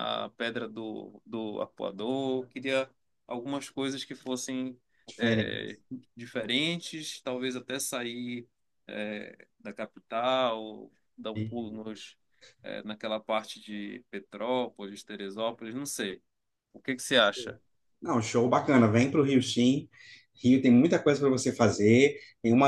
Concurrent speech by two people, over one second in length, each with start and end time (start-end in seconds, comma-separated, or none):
none